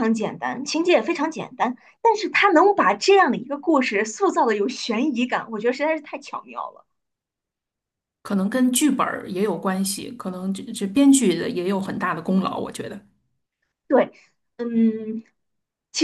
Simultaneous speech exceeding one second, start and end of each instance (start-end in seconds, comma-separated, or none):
none